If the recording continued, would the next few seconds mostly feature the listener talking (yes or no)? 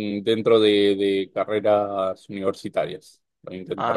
yes